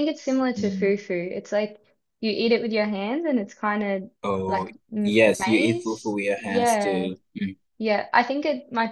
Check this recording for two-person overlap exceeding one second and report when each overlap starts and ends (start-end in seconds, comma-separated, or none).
4.5-7.1